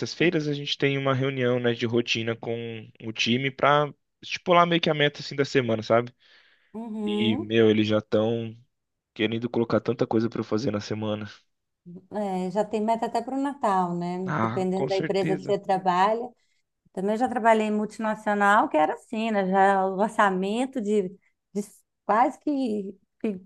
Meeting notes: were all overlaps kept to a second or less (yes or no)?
no